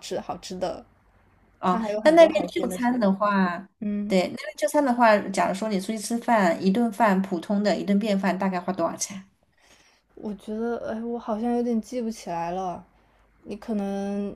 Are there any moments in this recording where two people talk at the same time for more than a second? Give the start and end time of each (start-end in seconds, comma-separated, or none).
1.6-3.1